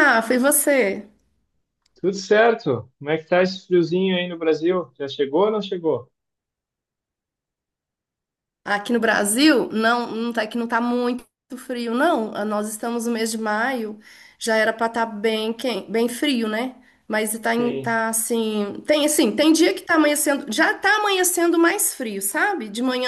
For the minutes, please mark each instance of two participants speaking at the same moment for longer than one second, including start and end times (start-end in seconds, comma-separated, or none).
none